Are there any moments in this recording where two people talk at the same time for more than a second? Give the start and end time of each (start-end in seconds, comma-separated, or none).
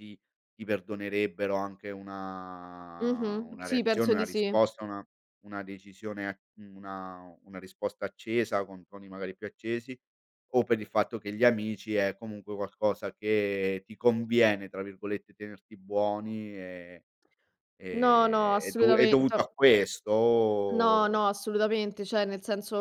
3.0-4.5, 17.9-19.4